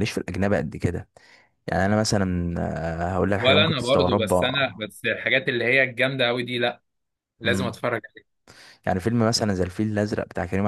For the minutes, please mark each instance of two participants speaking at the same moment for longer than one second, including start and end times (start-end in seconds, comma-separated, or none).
3.4-4.8